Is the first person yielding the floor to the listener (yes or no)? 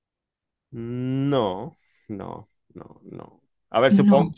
no